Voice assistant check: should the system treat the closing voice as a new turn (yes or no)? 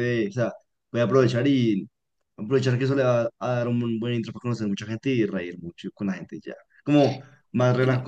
no